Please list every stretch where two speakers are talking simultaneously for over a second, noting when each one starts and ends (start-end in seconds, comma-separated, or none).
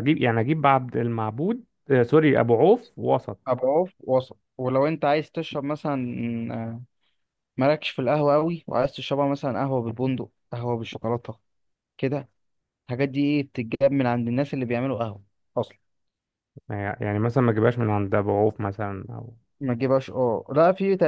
none